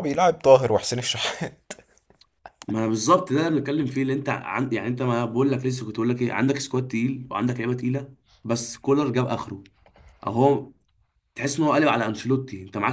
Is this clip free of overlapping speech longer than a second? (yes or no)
yes